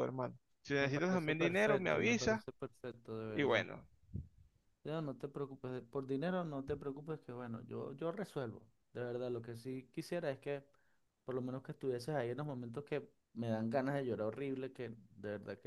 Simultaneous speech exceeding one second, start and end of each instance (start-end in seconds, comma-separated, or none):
0.8-2.4